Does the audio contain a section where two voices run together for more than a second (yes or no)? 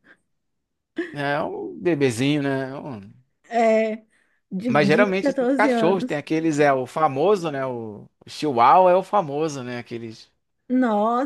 yes